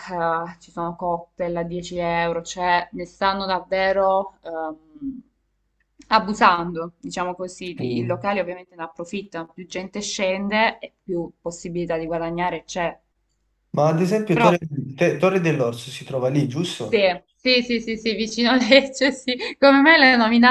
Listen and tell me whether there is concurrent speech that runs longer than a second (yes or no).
no